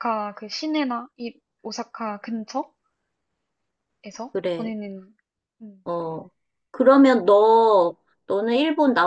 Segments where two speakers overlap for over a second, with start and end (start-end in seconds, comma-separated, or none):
none